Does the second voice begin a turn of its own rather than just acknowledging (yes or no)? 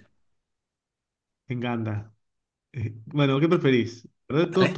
no